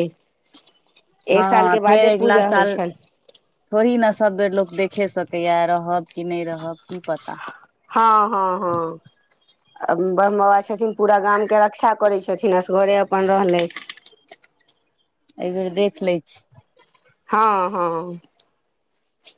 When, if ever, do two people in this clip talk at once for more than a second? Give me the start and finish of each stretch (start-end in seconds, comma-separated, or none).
none